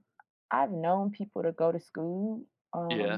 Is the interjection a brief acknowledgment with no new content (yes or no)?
yes